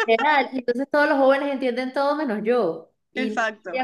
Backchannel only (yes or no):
yes